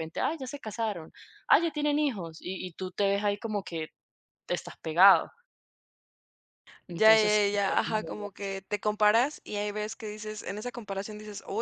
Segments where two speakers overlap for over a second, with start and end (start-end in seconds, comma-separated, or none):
6.9-8.5